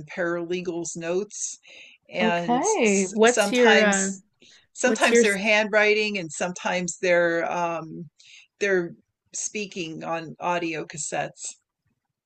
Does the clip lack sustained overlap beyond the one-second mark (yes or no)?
no